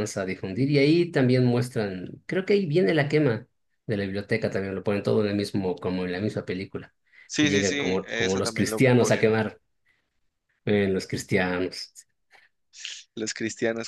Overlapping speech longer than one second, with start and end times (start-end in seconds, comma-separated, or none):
7.4-9.3